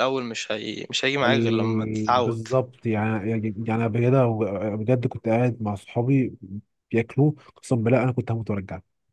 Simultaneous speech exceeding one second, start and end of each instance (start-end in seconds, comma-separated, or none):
1.2-2.5